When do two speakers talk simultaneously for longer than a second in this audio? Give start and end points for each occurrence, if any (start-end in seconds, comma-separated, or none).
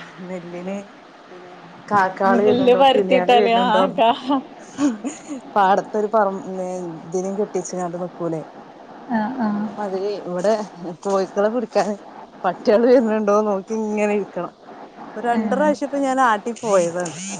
2.3-3.8